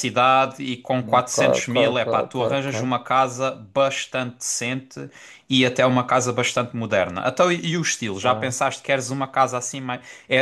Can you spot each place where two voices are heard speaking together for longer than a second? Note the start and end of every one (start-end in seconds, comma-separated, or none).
1.2-2.7